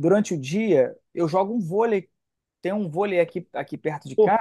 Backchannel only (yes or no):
yes